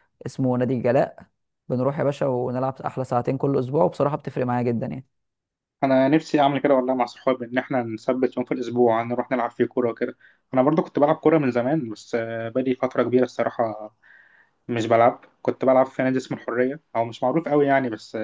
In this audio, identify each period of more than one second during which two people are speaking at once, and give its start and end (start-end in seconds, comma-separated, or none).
none